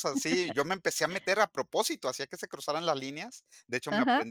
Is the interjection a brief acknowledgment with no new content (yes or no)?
yes